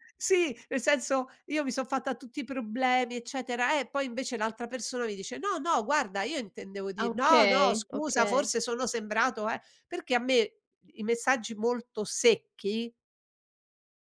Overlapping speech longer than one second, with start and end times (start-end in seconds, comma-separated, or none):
7.0-8.5